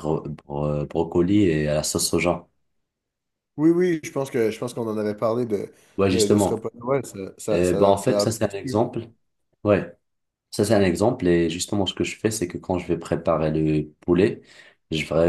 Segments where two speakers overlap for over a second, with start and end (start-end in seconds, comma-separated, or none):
7.5-8.8